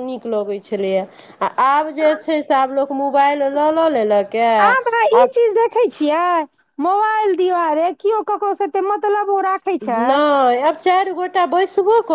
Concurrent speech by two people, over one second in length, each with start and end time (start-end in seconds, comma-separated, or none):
none